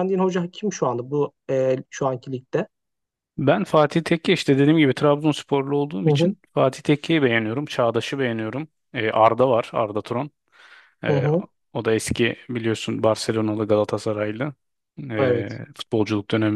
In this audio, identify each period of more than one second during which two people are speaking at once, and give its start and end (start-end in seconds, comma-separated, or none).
none